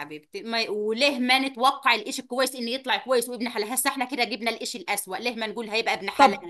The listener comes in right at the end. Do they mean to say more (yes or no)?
yes